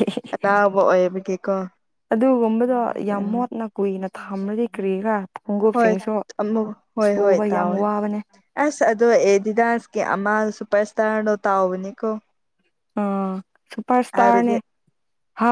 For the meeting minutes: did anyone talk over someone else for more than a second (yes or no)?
no